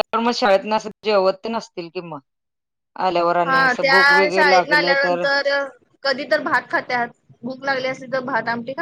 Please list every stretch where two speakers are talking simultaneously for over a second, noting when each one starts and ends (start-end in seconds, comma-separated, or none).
3.5-5.2